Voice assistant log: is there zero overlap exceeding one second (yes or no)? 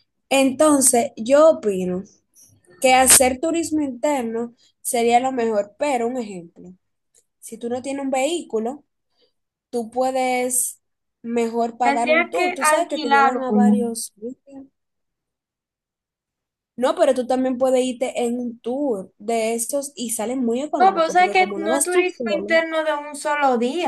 no